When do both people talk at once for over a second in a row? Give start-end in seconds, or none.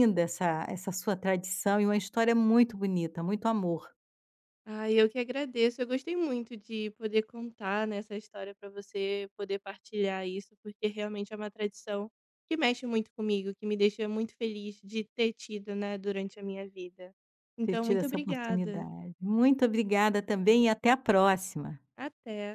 17.6-18.9